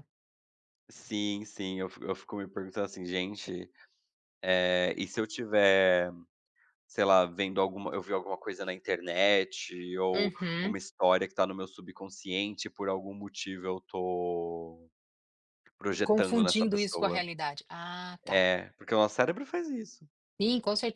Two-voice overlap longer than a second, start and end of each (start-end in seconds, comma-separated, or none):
16.0-17.2